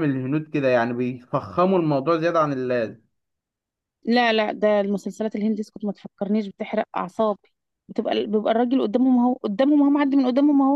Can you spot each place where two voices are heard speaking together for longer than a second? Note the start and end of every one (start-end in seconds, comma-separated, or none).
none